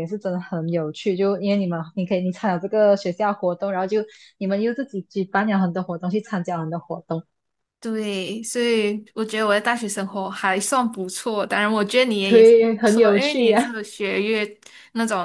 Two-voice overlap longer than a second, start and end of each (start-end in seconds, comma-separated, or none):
12.2-13.8